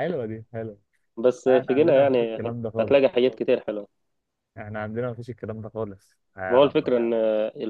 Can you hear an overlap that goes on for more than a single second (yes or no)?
yes